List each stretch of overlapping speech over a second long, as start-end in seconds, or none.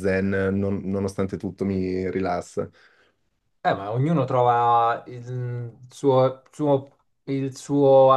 none